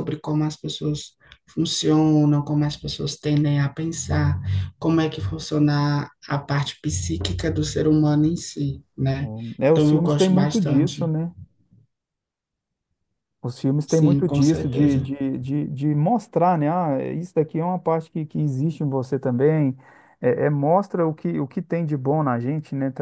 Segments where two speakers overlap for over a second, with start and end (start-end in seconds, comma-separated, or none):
9.7-11.1, 13.8-15.1